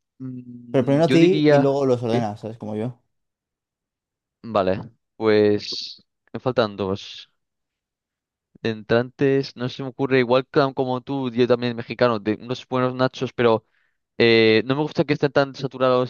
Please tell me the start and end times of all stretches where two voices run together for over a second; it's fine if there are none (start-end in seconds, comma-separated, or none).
0.7-2.3